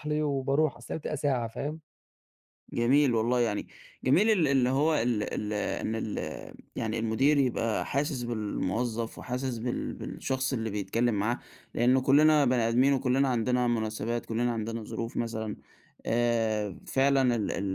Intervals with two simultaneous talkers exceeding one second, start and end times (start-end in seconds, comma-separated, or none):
none